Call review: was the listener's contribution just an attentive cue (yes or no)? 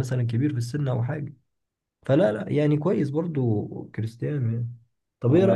no